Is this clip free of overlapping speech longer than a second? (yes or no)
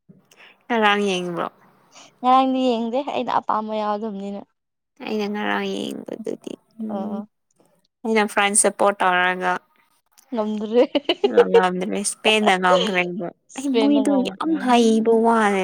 no